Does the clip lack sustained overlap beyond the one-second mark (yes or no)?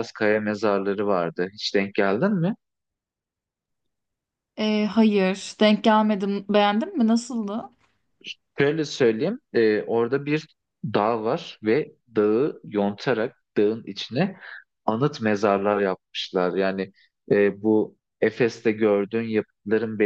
yes